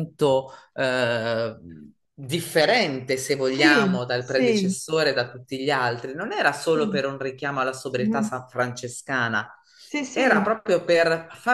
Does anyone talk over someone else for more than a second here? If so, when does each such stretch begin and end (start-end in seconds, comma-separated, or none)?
3.4-4.7